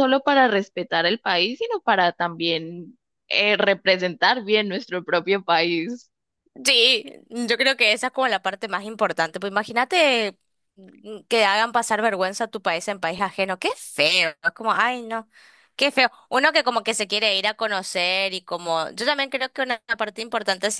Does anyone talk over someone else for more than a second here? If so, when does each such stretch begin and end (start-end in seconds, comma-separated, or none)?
none